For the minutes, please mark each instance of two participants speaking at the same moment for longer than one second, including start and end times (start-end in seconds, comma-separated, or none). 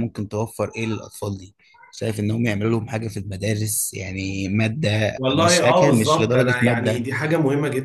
5.2-7.0